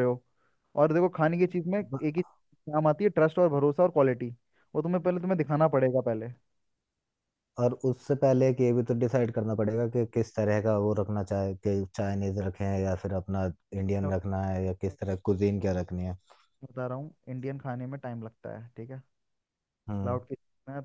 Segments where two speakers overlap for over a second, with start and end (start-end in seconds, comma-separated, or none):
none